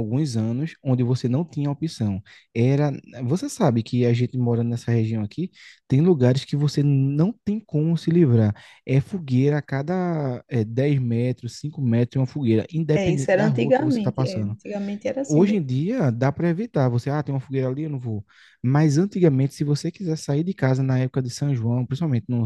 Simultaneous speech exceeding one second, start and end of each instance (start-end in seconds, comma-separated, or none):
12.9-14.5